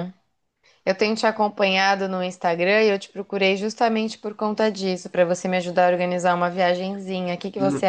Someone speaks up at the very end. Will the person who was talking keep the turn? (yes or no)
no